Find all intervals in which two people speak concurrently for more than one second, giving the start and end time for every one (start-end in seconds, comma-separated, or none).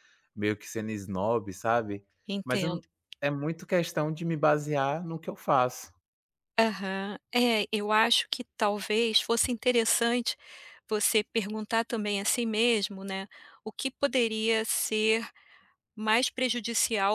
none